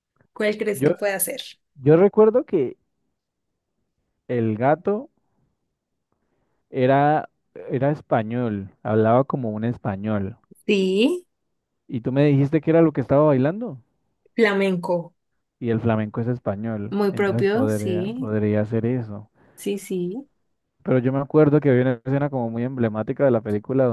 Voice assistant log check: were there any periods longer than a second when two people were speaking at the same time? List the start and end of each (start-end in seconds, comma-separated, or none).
16.9-18.3